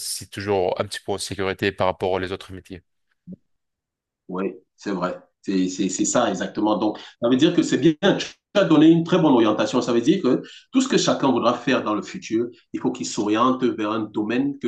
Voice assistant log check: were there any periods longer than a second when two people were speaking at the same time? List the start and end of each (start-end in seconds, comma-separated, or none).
none